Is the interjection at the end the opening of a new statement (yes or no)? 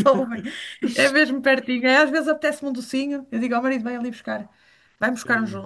no